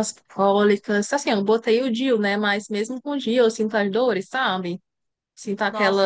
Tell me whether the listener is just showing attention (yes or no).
yes